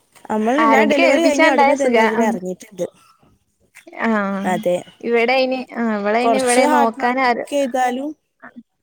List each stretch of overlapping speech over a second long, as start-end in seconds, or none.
0.7-2.3, 6.2-7.5